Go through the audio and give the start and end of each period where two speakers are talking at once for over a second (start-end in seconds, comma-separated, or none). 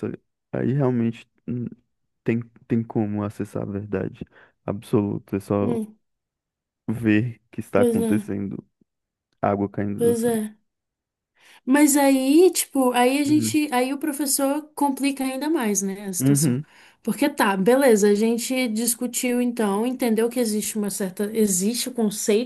none